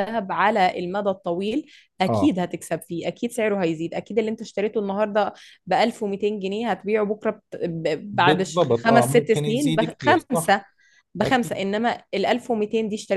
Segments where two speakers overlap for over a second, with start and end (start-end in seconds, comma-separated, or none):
8.1-10.5